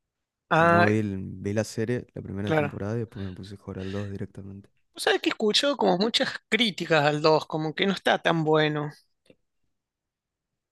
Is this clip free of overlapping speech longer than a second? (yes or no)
yes